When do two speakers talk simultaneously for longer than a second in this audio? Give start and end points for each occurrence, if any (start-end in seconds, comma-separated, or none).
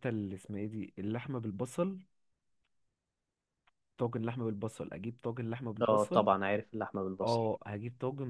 none